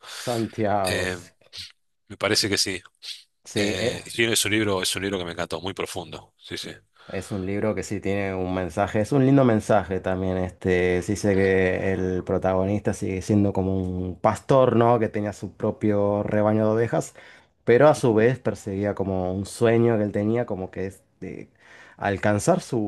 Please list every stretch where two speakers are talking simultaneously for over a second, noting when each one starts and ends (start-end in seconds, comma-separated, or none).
none